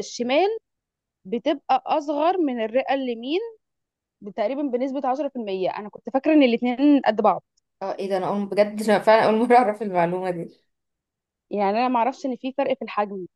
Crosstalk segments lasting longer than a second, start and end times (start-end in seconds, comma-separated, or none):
none